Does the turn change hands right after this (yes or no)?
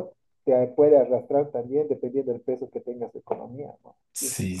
yes